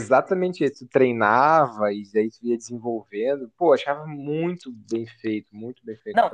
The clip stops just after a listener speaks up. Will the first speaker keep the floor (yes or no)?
no